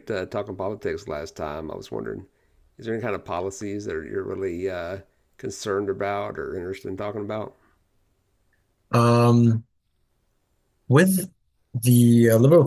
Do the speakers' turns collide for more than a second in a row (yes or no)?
no